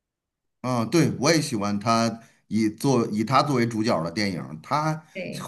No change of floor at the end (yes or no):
yes